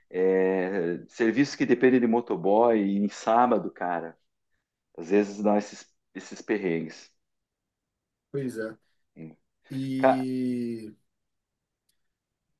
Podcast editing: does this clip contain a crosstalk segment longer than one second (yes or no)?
no